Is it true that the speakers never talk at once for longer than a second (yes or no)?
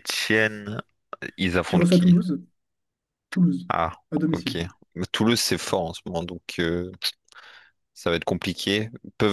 yes